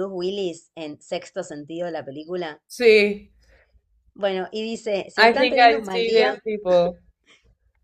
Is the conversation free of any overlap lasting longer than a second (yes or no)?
no